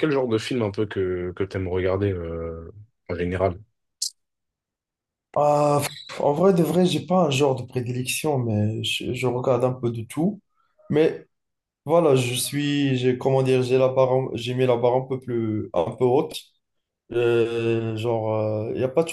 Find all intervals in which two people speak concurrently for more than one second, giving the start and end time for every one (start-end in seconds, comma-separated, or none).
none